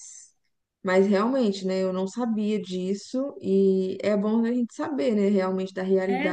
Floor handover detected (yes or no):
yes